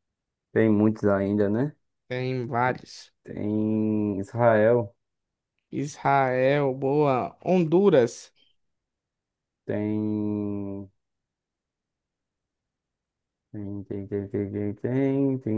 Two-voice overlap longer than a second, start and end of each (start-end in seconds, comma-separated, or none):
none